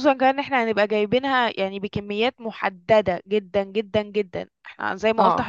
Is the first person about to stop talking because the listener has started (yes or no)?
no